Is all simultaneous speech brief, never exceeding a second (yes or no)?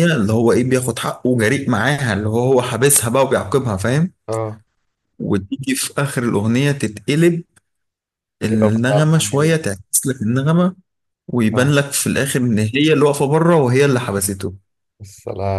no